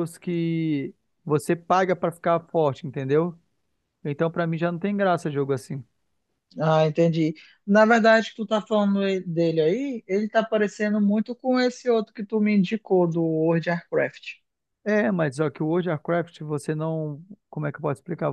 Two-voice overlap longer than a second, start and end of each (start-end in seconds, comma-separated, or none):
none